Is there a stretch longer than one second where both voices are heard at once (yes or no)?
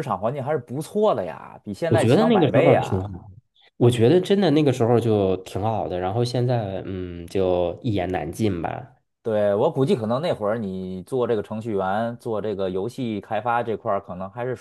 yes